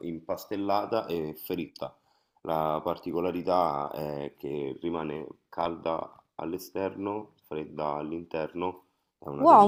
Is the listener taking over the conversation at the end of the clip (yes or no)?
yes